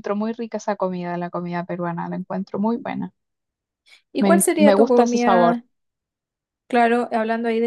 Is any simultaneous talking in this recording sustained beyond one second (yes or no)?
yes